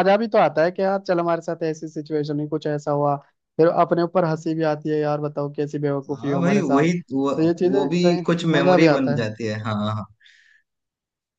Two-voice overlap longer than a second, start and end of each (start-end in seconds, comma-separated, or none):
6.2-9.3